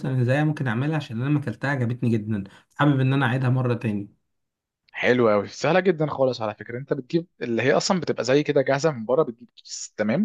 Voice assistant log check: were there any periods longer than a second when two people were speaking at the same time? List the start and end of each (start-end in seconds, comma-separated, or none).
none